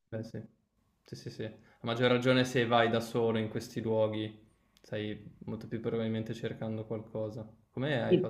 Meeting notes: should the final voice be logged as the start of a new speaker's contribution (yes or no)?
yes